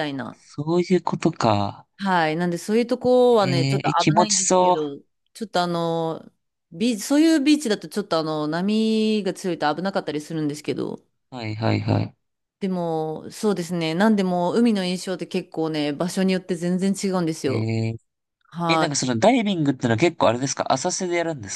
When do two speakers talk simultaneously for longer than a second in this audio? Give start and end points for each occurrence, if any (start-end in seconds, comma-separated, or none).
3.4-4.8